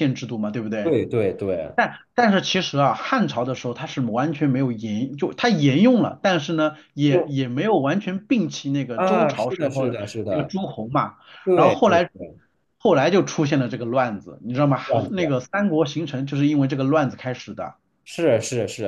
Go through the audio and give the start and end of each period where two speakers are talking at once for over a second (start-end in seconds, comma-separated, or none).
8.9-10.6